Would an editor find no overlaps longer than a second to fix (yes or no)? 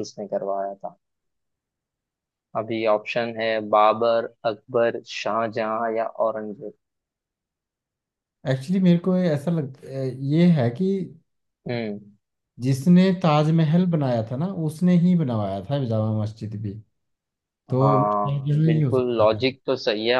no